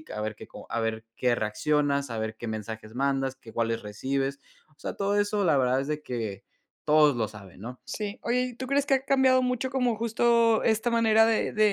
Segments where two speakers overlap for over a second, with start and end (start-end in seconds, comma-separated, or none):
none